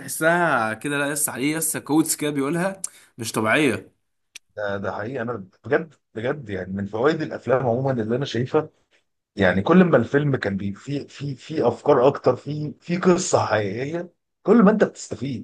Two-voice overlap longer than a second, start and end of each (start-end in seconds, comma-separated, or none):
none